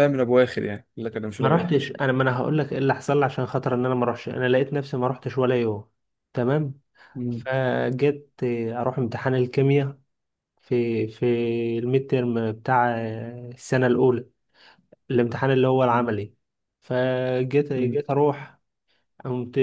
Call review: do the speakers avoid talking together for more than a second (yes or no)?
yes